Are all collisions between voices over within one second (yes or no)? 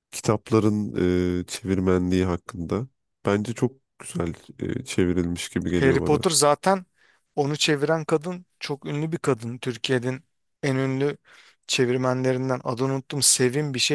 yes